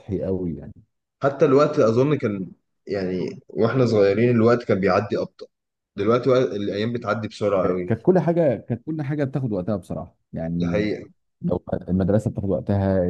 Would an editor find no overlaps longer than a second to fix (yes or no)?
yes